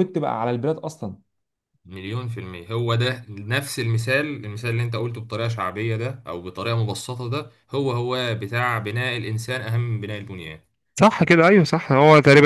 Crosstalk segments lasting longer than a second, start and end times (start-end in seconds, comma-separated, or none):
none